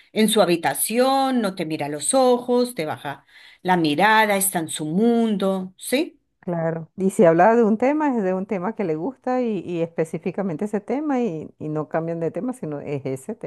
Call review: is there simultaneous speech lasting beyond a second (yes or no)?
no